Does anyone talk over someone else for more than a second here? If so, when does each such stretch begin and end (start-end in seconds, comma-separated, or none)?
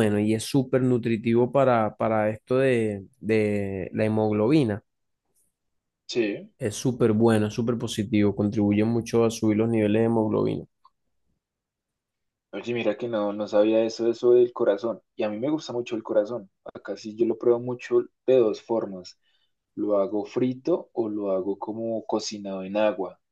none